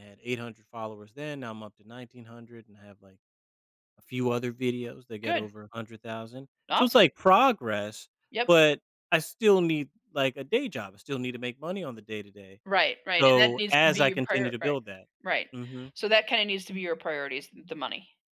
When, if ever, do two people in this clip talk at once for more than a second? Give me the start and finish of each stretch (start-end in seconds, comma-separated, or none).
13.2-14.8